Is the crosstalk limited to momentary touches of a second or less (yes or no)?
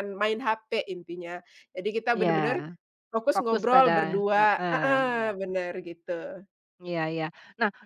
no